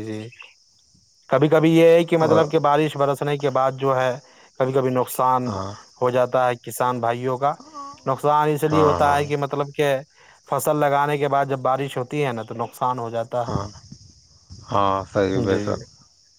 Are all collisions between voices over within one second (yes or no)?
yes